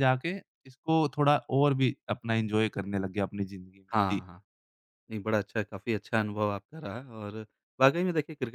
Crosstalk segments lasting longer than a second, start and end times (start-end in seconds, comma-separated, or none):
none